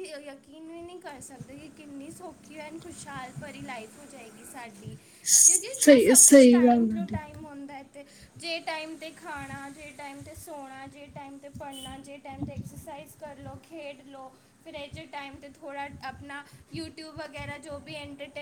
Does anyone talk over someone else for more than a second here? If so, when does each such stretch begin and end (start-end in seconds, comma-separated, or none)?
5.4-7.2